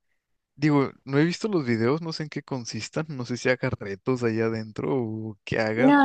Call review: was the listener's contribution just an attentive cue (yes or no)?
no